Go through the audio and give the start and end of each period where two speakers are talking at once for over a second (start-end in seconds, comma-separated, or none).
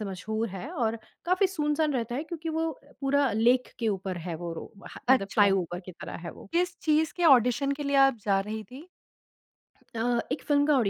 none